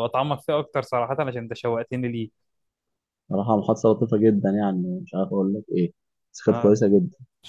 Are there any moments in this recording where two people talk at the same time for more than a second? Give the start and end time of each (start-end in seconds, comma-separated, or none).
none